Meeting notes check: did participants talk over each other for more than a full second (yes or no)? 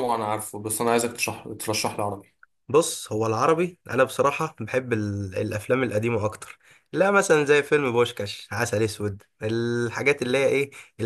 no